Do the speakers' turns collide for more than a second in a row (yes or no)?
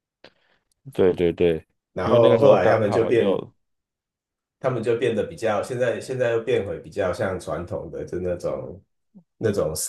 yes